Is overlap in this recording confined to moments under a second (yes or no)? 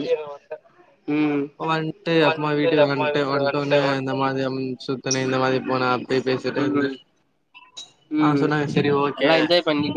no